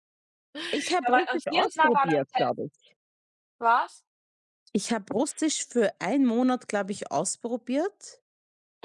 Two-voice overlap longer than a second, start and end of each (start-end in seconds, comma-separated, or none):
1.0-2.4